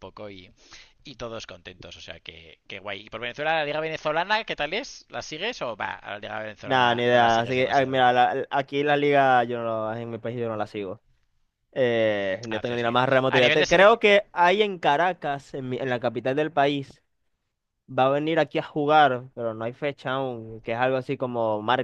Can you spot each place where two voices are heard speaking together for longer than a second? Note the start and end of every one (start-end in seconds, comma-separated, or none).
6.6-8.1, 12.5-14.0